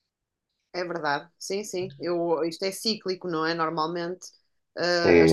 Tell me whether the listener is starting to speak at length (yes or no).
yes